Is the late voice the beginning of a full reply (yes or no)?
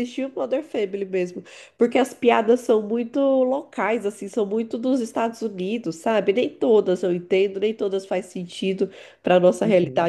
no